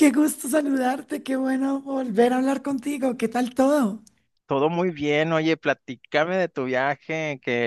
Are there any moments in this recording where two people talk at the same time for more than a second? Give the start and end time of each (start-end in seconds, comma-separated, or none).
none